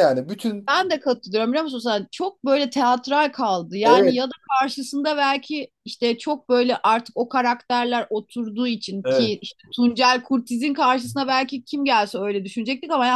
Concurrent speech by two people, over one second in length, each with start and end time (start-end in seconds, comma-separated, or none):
none